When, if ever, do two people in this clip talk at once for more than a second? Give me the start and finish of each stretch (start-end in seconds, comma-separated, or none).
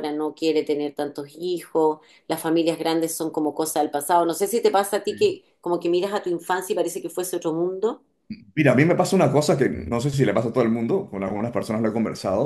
none